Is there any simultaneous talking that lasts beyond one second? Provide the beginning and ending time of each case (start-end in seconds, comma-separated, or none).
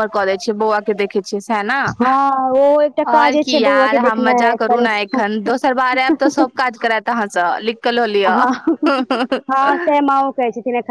3.1-5.2